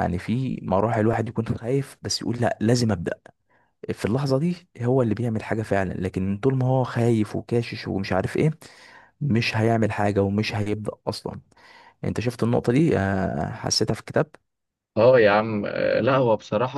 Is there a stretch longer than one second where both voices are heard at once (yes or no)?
no